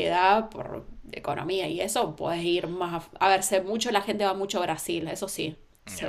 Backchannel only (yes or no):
no